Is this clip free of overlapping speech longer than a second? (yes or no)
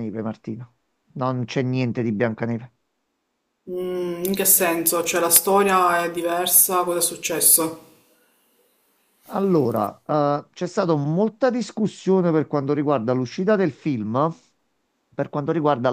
yes